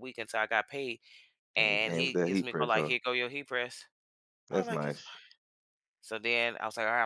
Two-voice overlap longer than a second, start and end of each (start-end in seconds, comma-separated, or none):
1.6-2.9